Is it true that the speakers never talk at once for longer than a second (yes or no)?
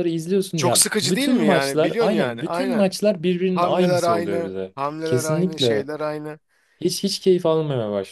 no